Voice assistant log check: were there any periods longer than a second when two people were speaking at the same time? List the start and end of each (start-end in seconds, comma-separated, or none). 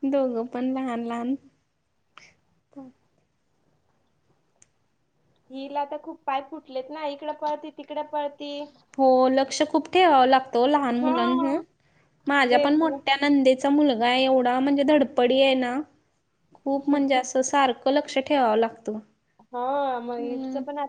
none